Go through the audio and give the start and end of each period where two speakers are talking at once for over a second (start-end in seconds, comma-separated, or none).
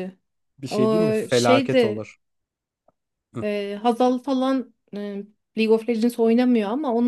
0.7-2.0